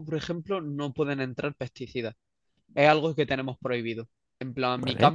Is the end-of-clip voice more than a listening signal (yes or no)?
no